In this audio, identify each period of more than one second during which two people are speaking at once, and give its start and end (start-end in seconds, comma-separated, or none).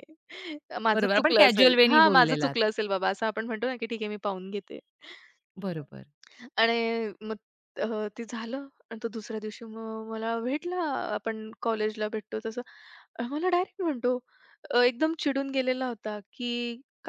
0.9-2.5